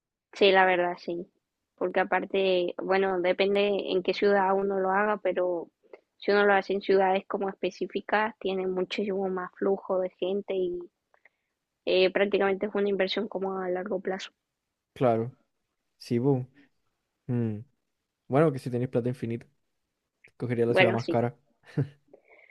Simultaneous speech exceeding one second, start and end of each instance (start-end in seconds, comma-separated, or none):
none